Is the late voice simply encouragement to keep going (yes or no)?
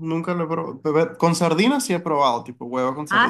no